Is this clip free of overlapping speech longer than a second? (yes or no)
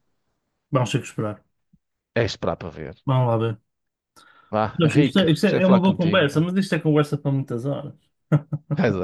no